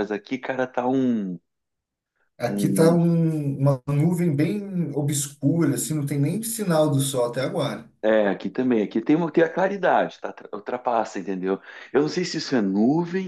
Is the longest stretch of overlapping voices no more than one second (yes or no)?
yes